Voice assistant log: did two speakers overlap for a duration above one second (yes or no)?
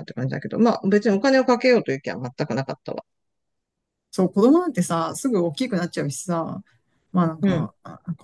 no